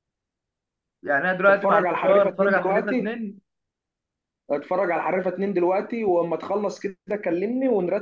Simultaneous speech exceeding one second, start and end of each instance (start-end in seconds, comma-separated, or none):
1.5-3.1